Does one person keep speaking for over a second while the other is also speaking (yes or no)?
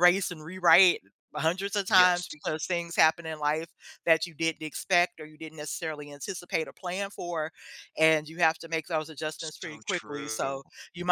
yes